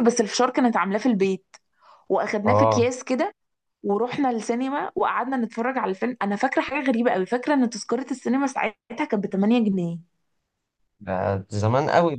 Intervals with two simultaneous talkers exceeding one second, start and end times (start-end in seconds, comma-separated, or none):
none